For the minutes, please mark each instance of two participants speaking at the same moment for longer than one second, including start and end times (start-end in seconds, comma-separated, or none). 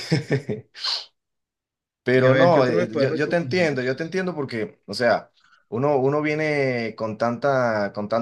2.1-3.7